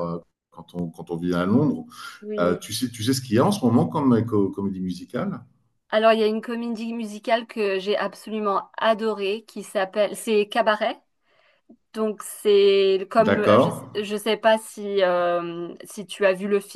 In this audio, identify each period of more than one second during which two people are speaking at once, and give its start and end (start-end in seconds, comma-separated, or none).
none